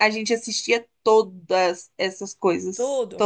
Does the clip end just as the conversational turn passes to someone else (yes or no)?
yes